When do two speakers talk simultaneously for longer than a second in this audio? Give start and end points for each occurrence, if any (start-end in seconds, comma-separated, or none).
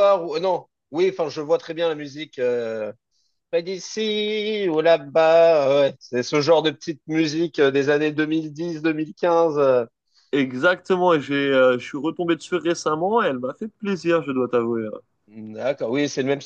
none